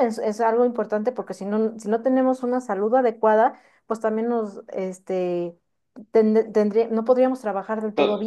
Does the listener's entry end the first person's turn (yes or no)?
yes